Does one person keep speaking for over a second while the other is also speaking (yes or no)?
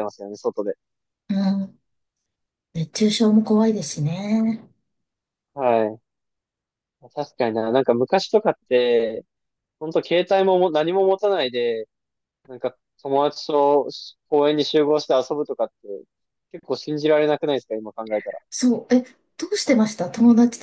no